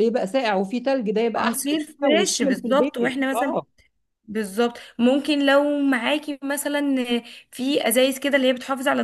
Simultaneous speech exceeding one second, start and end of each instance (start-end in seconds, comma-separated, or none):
1.4-3.6